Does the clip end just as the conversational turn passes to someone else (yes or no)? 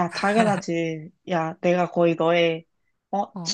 no